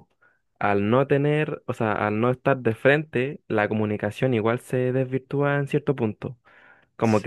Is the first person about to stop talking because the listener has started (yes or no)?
yes